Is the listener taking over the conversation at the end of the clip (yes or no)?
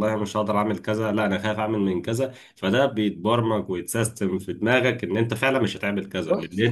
no